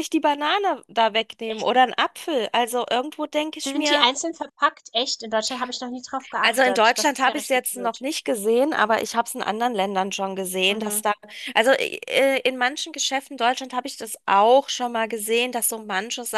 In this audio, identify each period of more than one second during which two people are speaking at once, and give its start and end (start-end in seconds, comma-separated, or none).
6.4-8.0